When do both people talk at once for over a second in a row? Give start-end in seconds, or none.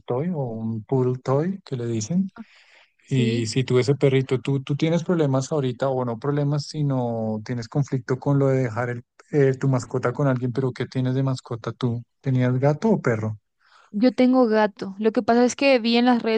none